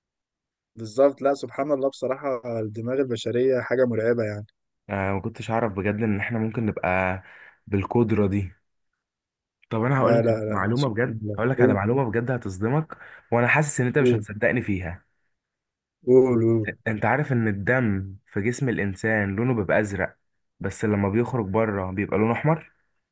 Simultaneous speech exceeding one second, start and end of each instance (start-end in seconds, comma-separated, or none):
10.0-11.8